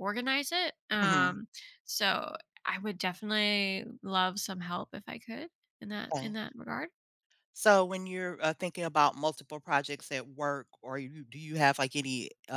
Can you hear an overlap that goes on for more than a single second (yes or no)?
no